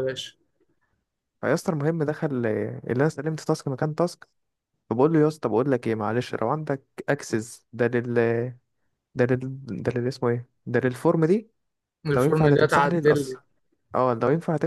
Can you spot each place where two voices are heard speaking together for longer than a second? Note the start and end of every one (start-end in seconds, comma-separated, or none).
12.1-13.3